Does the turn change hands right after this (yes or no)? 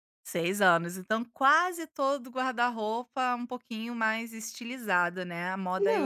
yes